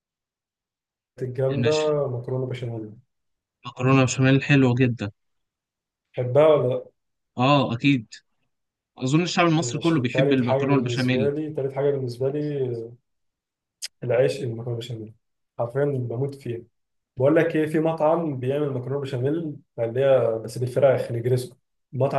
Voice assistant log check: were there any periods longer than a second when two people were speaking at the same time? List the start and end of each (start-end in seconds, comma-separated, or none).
9.6-11.3